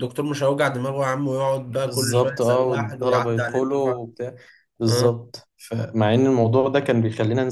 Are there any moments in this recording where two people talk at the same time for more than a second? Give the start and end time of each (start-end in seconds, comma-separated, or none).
1.7-4.1